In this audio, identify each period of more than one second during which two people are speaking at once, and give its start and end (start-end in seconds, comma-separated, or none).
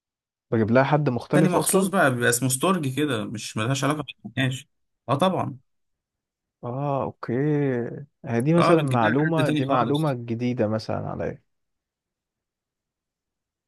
8.6-10.2